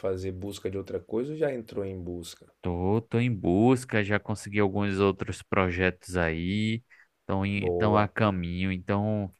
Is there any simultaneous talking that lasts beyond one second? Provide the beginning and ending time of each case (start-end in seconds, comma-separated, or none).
none